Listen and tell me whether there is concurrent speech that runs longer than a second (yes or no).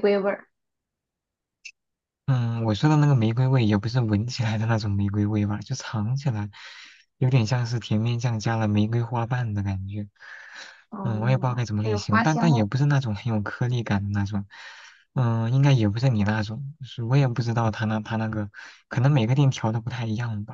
yes